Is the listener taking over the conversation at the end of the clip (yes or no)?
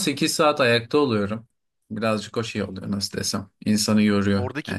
yes